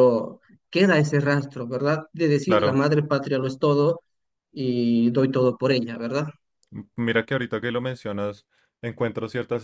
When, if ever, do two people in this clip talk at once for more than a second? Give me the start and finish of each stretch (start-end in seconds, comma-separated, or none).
none